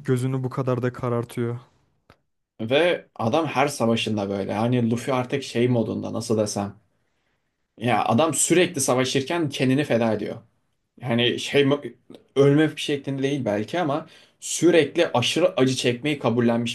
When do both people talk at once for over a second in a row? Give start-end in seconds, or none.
none